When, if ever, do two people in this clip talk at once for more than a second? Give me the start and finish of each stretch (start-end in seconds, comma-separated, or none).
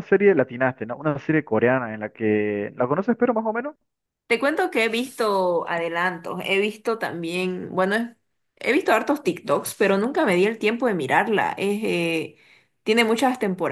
none